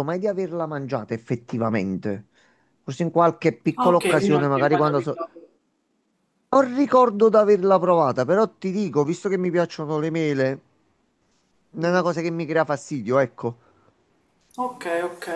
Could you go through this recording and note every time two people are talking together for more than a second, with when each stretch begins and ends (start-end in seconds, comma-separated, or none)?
3.8-5.2